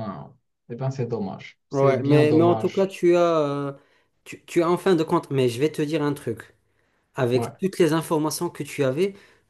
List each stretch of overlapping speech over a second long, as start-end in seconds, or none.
1.7-2.9